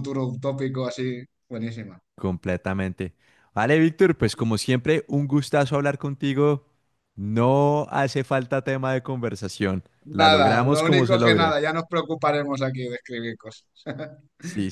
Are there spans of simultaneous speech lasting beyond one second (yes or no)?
yes